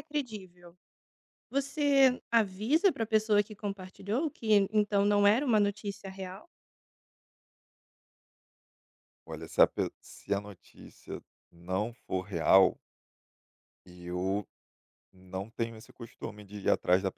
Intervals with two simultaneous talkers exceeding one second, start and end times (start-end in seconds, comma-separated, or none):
none